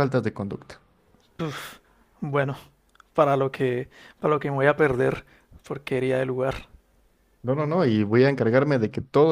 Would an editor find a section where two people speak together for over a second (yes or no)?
no